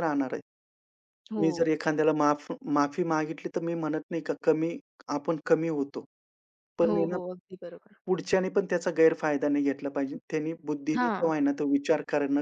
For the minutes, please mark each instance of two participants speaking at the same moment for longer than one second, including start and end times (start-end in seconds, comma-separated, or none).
none